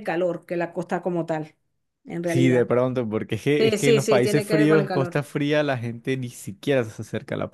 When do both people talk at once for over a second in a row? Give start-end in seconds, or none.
3.6-5.2